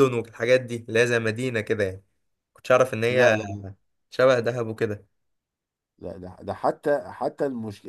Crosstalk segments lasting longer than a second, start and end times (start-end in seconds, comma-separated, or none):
none